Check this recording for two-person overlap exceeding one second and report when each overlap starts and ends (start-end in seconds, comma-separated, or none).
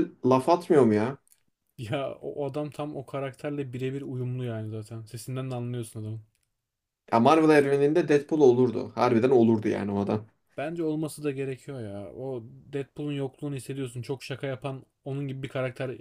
none